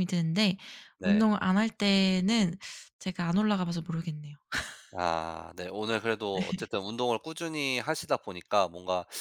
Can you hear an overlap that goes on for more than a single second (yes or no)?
no